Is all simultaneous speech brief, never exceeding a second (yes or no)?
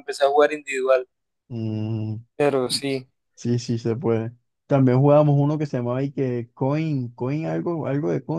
yes